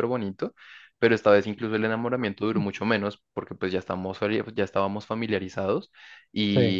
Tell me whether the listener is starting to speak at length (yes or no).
no